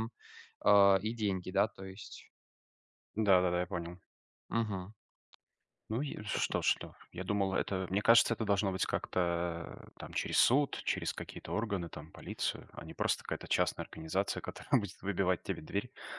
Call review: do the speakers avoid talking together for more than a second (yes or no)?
yes